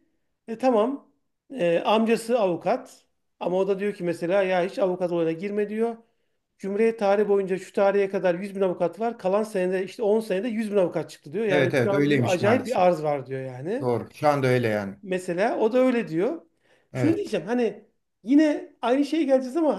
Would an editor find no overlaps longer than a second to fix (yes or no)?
no